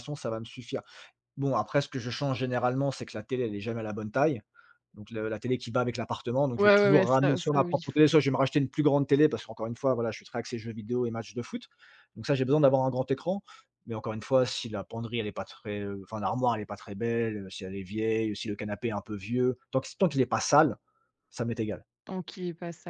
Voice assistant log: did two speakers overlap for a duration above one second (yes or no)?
yes